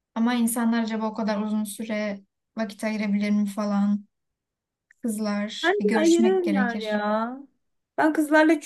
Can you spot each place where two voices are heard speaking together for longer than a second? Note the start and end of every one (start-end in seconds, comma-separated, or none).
5.6-7.0